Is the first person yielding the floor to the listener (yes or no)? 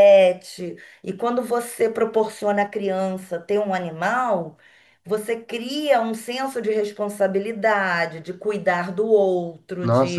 yes